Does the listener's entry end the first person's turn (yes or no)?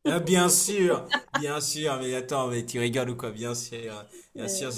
no